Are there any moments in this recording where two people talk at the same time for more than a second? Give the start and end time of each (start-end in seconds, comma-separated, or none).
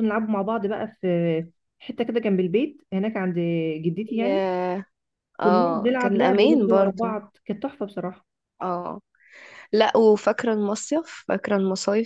5.4-7.2